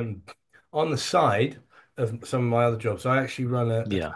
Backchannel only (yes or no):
yes